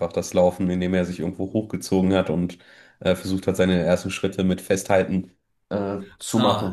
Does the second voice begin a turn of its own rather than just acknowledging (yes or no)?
yes